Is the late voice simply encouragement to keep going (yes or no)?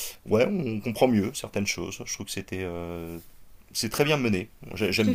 no